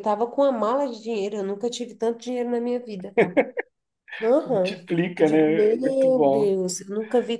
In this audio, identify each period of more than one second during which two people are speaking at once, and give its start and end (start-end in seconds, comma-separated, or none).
4.5-6.5